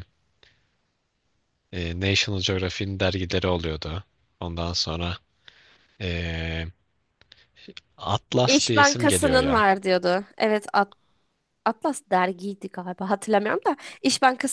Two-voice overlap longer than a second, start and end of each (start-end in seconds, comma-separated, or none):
8.4-9.7